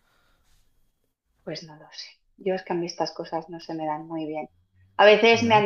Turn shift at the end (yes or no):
no